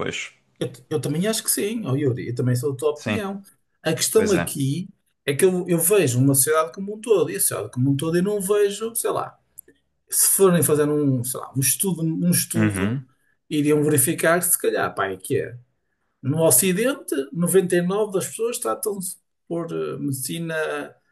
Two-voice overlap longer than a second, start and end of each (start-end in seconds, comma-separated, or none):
none